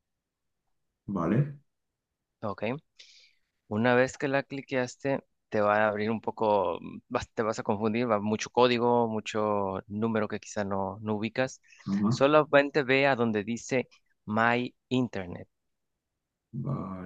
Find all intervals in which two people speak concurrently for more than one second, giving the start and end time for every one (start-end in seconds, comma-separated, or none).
none